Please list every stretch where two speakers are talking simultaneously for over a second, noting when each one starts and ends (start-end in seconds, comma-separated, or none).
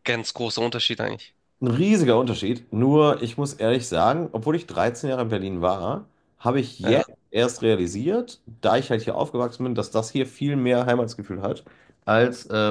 none